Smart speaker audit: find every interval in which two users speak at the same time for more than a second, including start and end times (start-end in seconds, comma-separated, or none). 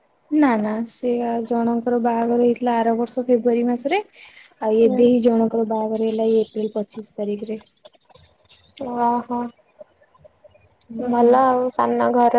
none